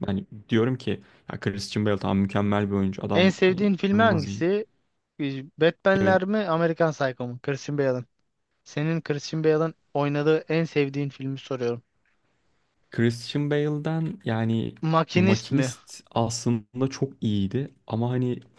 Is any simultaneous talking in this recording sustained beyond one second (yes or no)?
yes